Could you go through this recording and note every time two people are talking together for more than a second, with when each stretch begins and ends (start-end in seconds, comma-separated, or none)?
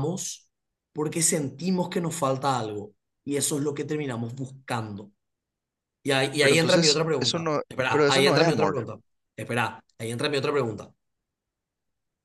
6.4-8.8